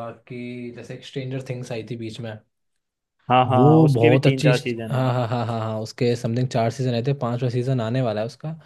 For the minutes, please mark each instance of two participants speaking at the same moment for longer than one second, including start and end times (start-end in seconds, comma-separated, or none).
3.5-5.0